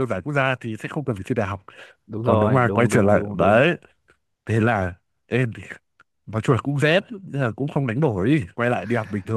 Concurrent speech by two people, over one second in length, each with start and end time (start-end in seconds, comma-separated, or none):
2.2-3.6